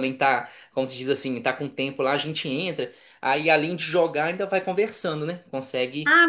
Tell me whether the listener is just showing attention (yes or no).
no